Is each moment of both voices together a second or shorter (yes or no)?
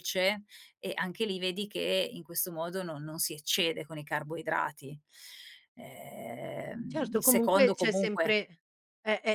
no